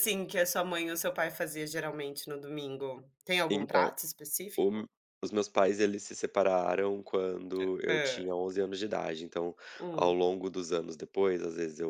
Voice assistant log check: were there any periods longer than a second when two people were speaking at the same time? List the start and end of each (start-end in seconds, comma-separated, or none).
none